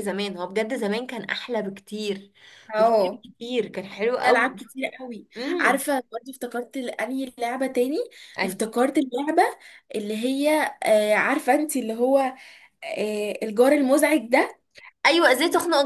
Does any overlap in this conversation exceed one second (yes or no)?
no